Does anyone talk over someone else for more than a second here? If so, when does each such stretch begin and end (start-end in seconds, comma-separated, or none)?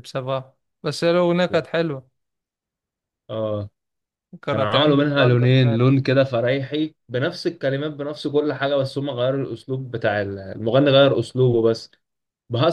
4.5-5.8